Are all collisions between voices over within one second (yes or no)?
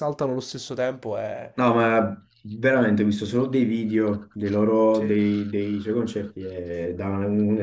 yes